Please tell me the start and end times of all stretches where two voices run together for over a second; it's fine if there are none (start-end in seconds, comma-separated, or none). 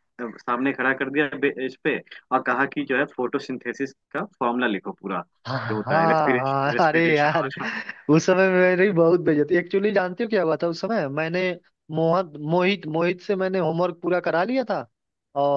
5.7-7.5